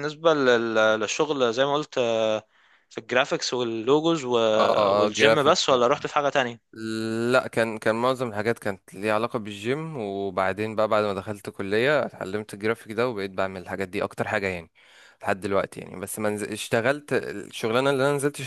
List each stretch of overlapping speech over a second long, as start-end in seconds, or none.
none